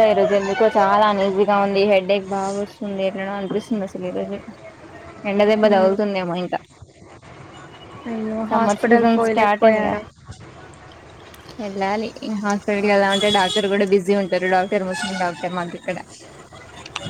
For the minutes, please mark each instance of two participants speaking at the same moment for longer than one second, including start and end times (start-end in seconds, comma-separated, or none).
8.5-9.9